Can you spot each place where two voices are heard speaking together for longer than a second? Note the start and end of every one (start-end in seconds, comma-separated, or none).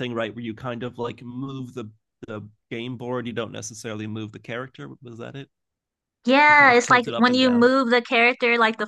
6.5-7.7